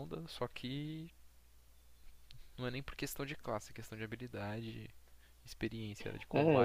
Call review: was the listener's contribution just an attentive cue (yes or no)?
no